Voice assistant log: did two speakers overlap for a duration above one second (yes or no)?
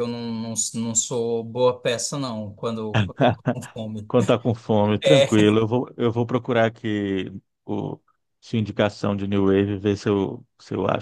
no